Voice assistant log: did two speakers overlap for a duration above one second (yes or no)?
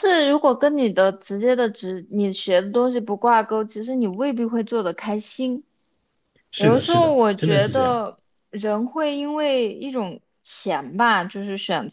yes